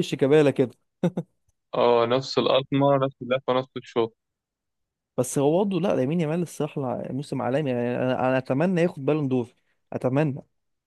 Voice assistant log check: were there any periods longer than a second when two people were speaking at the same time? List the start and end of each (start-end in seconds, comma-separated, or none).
none